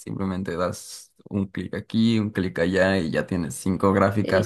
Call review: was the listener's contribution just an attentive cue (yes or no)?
yes